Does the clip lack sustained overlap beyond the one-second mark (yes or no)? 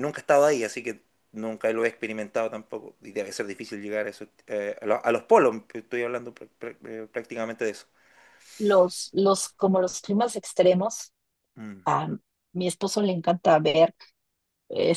yes